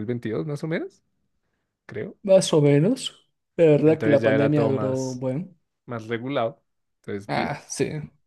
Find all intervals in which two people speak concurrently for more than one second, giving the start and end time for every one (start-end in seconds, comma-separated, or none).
3.8-5.2